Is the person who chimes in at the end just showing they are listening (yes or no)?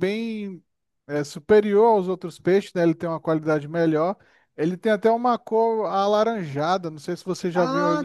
no